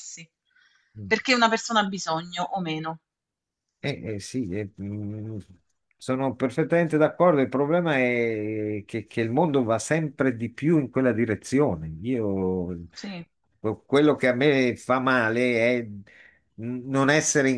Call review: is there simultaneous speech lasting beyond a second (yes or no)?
no